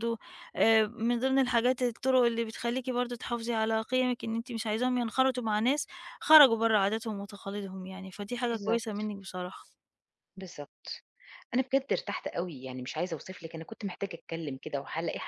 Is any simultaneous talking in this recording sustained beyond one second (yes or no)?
no